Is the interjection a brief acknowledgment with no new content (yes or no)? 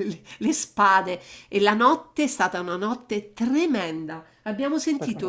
yes